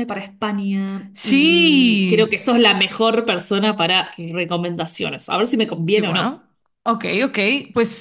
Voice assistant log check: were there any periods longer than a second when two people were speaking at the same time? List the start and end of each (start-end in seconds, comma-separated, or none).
1.1-2.4